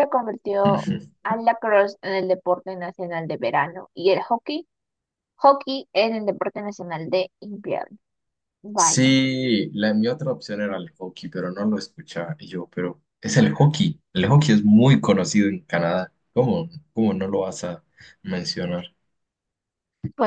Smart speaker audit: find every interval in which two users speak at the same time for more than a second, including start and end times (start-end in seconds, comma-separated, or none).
none